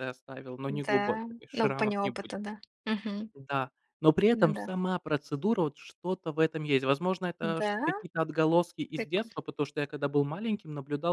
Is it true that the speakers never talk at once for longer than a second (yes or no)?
no